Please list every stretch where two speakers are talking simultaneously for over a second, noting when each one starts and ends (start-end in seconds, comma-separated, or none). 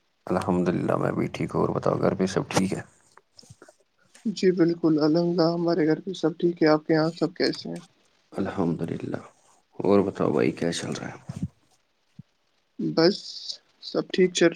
none